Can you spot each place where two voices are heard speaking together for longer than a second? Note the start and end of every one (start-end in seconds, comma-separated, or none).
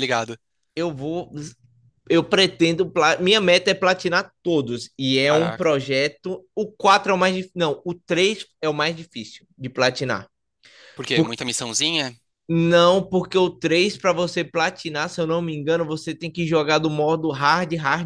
none